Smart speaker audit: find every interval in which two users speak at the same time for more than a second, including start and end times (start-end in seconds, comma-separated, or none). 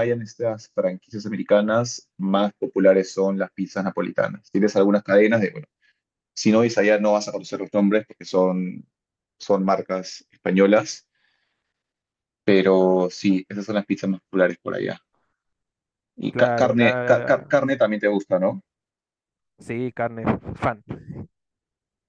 16.3-17.5